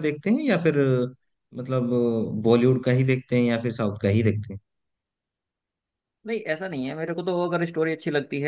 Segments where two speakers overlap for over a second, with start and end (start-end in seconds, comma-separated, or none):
none